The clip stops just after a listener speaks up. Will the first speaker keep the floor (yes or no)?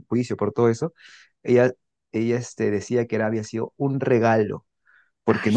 yes